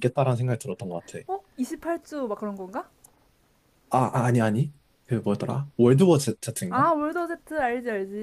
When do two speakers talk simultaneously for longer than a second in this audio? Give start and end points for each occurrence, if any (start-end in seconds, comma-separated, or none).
none